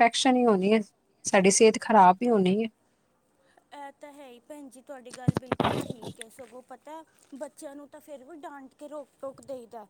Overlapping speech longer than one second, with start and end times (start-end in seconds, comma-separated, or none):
none